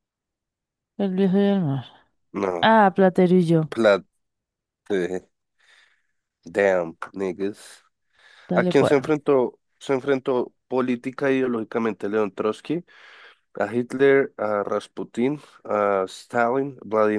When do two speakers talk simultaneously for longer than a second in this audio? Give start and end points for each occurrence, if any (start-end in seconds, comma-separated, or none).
none